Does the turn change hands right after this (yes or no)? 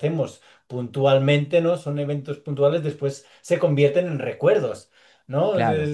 no